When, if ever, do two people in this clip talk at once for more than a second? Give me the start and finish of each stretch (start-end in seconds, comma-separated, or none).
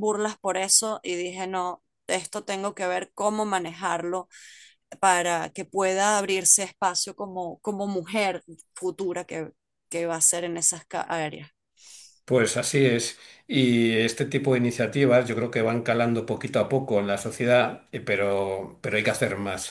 none